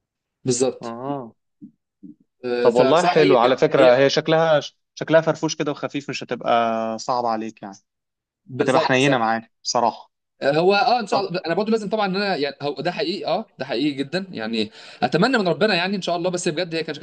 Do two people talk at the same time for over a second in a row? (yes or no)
yes